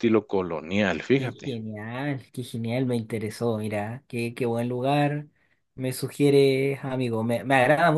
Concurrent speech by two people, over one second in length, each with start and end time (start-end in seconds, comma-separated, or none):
none